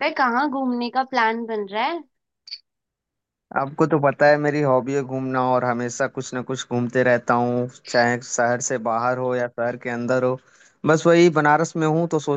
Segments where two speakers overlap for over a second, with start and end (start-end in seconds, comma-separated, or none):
none